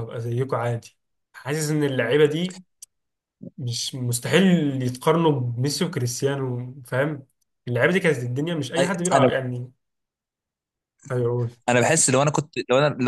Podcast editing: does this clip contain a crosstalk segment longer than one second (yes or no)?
no